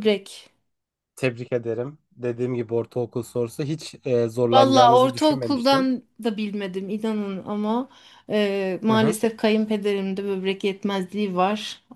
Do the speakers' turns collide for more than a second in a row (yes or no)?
yes